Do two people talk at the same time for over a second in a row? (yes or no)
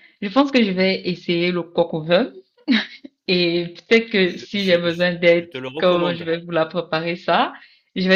yes